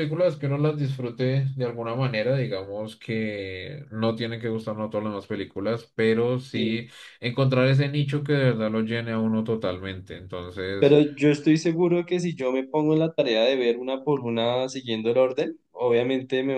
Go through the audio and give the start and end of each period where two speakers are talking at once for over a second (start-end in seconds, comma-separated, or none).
none